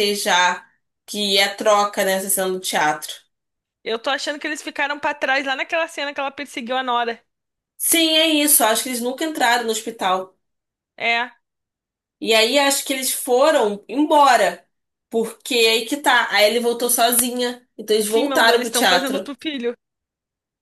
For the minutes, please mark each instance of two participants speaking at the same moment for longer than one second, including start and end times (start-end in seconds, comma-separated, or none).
18.0-19.3